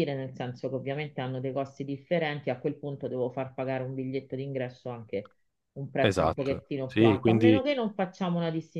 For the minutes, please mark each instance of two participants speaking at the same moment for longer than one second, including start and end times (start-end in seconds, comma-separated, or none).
6.0-7.6